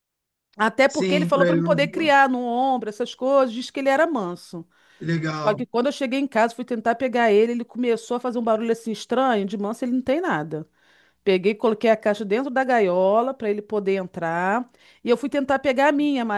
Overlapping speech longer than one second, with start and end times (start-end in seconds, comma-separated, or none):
0.9-2.1